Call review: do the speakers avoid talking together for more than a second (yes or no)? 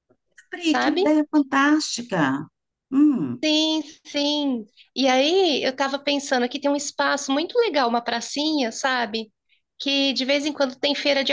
yes